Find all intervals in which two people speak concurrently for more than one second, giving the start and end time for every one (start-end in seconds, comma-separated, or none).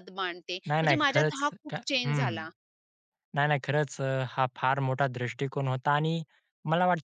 0.7-2.4